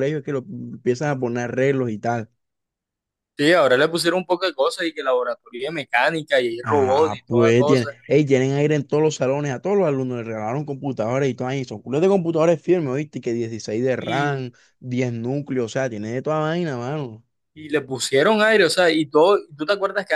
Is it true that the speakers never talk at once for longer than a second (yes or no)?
no